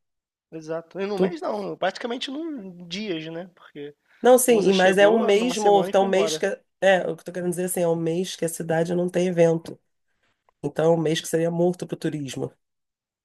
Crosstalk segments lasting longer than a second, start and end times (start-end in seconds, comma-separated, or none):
4.5-6.5